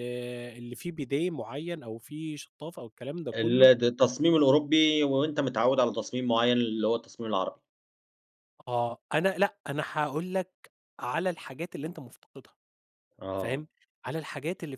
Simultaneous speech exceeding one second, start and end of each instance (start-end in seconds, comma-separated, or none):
none